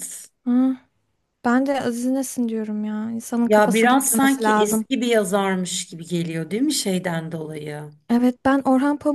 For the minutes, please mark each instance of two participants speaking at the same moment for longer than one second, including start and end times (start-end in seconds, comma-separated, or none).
3.5-4.8